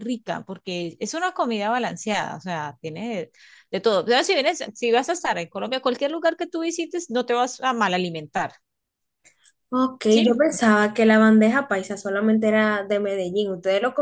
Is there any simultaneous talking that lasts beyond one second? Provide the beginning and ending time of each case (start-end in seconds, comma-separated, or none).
none